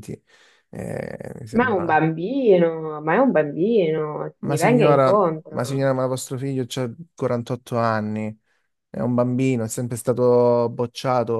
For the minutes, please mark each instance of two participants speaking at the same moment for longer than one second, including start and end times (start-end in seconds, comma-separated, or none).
4.4-5.9